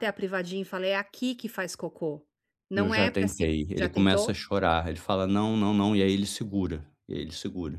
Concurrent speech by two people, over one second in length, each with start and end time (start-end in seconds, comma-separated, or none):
2.7-4.4